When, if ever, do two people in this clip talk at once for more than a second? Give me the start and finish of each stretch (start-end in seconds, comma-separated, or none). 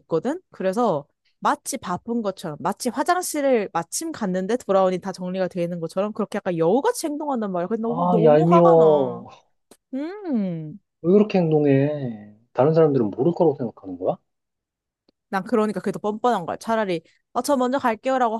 7.8-9.2